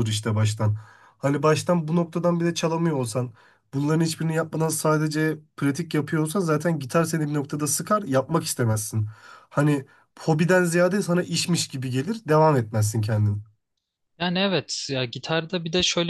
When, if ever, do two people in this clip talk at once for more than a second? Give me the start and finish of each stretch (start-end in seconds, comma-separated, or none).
none